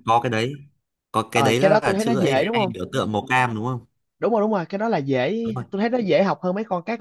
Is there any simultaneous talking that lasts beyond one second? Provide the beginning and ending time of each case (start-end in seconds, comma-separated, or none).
1.3-2.7